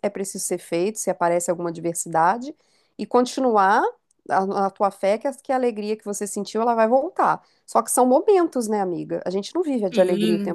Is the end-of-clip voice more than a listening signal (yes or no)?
yes